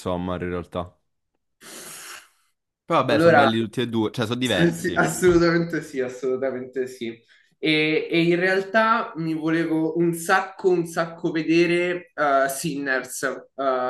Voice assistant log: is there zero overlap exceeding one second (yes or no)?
yes